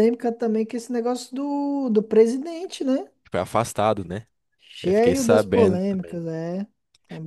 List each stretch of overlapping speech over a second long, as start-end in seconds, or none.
4.8-6.2